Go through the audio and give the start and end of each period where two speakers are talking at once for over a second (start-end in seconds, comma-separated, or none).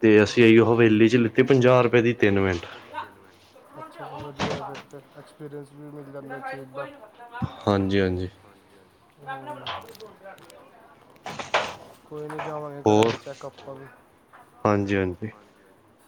none